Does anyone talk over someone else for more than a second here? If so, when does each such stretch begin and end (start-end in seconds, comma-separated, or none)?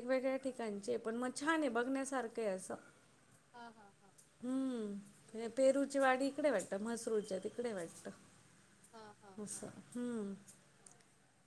none